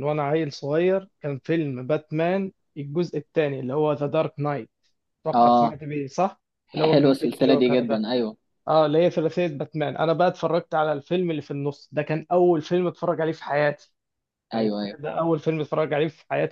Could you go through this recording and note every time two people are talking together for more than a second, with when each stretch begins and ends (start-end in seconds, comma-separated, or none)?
6.7-8.0